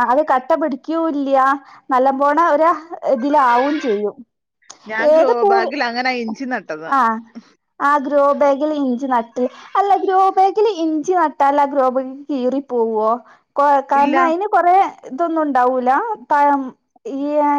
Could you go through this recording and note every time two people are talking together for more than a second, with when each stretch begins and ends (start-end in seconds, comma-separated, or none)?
none